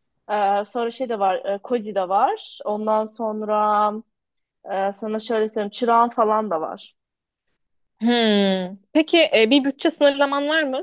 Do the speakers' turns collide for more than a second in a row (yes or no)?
no